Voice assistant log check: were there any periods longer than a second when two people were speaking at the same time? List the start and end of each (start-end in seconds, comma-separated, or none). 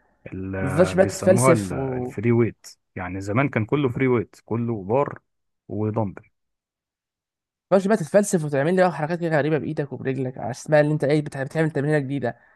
0.6-2.1